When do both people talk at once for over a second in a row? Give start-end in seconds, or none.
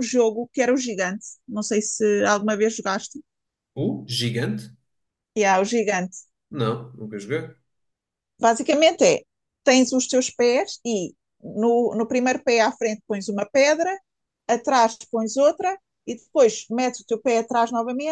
none